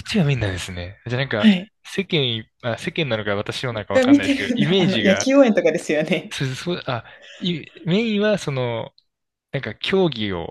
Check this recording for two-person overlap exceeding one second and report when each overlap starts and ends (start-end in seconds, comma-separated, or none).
3.9-5.3